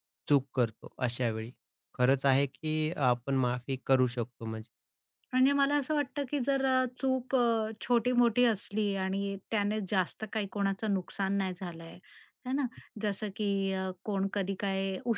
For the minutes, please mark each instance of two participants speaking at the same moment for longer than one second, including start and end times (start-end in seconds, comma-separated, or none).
none